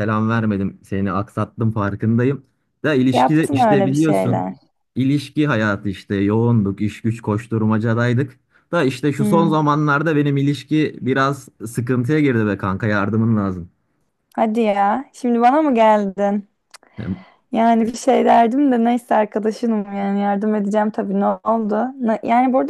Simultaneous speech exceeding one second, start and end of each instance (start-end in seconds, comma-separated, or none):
3.1-4.5